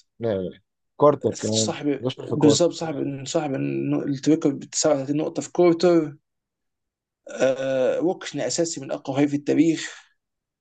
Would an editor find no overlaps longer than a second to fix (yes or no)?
no